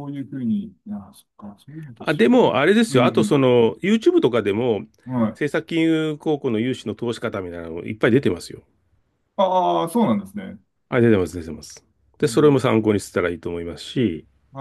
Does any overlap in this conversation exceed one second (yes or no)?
yes